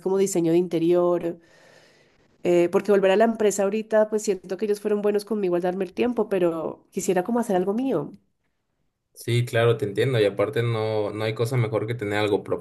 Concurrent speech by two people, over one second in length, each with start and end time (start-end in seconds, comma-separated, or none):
none